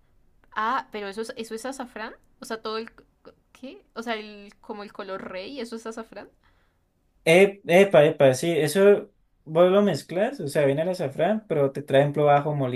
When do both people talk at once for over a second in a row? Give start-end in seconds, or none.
none